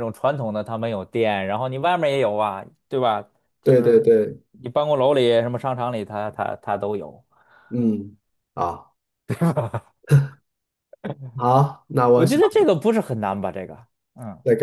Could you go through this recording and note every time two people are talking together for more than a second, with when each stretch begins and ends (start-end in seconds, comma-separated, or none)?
none